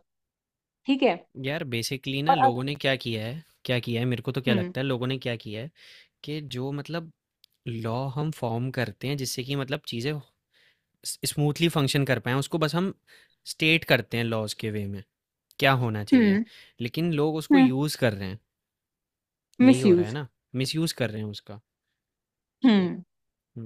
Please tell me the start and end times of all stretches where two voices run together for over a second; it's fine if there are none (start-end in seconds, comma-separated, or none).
none